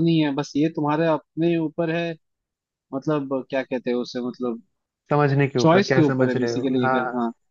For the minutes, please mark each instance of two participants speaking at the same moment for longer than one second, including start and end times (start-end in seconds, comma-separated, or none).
5.6-6.9